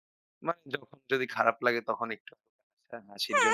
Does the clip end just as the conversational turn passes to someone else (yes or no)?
yes